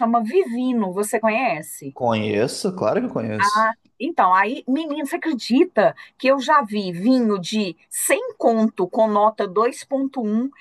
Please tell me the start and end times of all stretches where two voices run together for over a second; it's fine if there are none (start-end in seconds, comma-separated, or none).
none